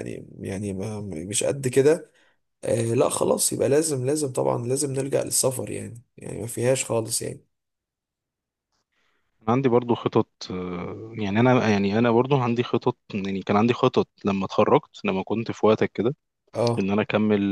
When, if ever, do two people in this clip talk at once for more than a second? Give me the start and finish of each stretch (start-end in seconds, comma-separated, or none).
none